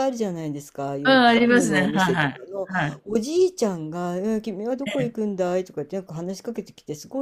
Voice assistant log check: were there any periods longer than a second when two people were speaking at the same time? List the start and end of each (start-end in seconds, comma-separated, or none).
1.1-2.7